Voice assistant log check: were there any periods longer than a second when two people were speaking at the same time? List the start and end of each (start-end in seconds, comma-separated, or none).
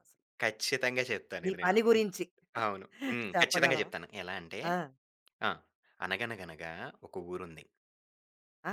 none